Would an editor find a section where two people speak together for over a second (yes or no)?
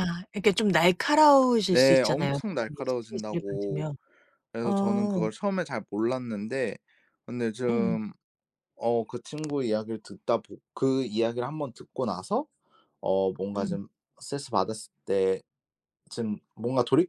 yes